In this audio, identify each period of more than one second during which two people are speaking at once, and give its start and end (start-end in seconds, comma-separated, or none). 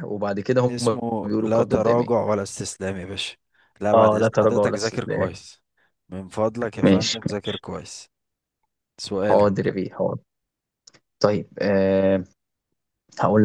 0.7-2.1, 3.9-5.3